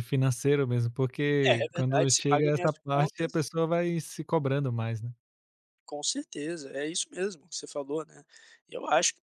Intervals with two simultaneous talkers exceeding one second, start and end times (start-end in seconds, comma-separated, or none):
1.5-3.4